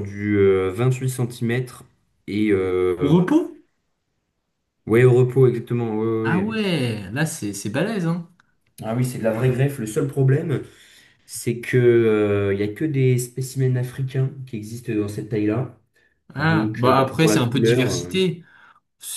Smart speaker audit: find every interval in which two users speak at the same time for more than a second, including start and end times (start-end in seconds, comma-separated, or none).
16.4-18.2